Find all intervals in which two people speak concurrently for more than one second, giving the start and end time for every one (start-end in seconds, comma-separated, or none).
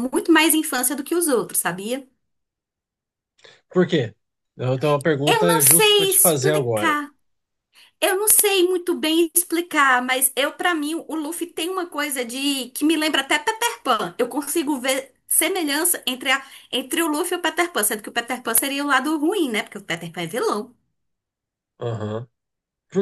5.3-7.0